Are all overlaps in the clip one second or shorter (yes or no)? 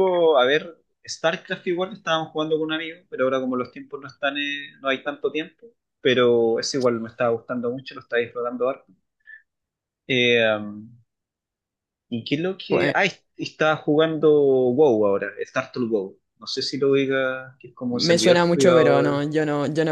no